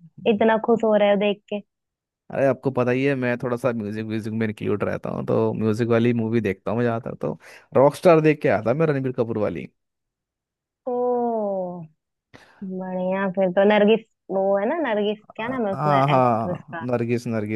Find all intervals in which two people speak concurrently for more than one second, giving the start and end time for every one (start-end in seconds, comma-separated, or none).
15.4-16.8